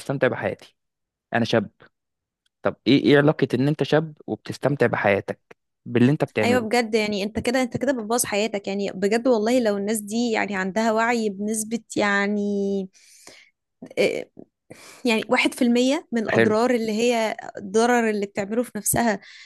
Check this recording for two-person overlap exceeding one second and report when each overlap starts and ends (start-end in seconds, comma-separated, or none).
none